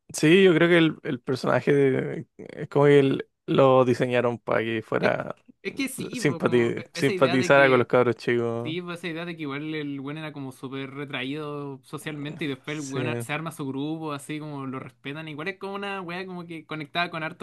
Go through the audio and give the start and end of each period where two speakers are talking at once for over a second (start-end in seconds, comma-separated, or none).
6.1-7.9